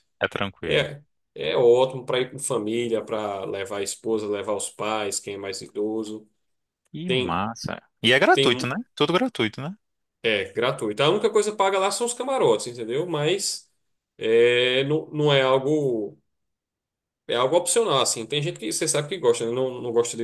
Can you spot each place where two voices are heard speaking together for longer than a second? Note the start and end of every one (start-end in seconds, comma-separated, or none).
none